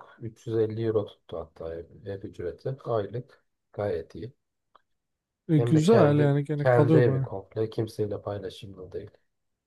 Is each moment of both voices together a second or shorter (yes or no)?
no